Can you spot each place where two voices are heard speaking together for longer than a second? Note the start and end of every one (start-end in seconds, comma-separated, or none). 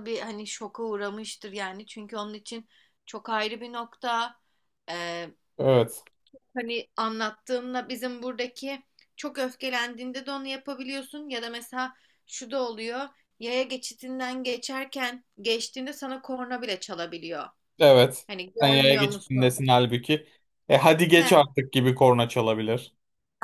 18.3-19.7